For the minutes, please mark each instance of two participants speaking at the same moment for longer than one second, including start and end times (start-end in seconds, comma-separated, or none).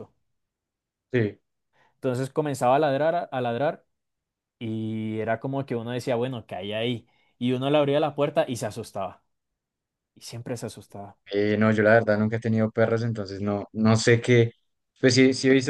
none